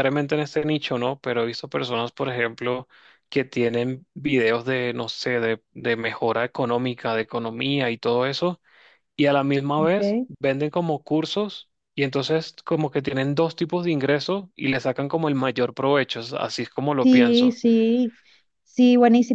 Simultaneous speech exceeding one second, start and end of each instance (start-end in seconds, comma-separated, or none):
none